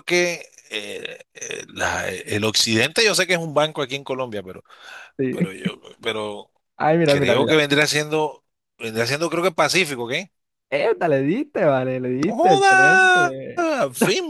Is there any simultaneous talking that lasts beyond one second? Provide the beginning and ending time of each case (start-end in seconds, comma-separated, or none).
12.3-13.7